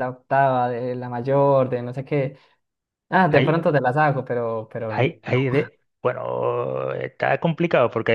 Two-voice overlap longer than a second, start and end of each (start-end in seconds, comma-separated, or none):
none